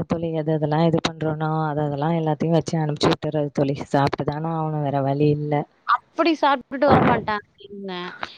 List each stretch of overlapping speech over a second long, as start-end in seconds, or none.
none